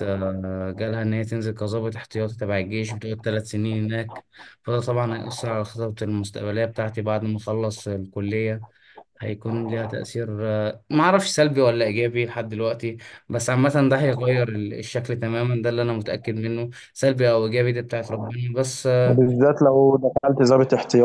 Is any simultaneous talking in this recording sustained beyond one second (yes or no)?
no